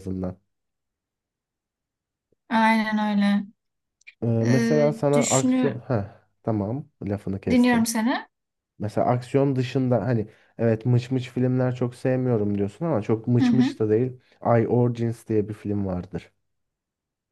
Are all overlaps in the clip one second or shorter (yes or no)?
no